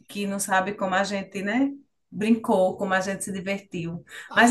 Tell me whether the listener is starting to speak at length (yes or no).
no